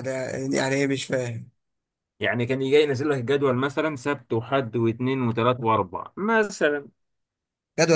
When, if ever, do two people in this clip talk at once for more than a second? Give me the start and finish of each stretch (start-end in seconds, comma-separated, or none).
none